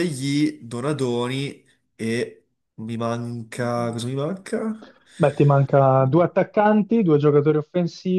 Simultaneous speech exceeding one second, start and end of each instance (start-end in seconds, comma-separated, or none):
none